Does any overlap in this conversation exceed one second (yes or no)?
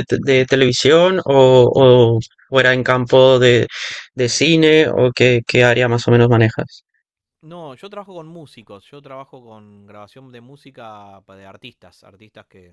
no